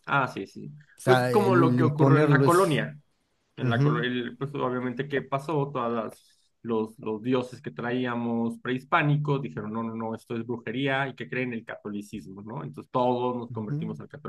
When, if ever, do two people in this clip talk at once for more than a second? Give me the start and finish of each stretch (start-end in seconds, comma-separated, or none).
1.0-2.8